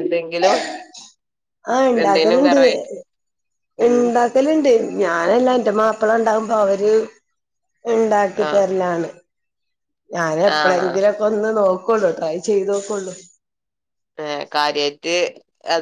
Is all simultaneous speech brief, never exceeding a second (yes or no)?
yes